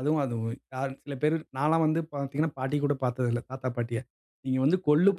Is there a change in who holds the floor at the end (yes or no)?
no